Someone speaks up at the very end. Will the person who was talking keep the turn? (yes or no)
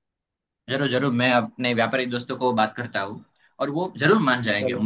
yes